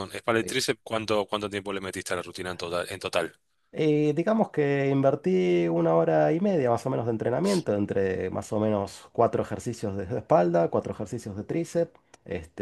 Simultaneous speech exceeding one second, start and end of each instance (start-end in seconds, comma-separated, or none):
none